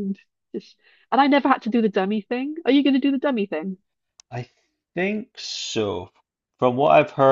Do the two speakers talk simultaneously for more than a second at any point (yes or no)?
no